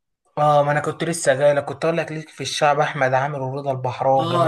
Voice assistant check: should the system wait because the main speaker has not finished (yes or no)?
no